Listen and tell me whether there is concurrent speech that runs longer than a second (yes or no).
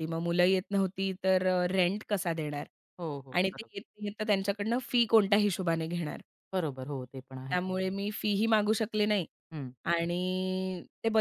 no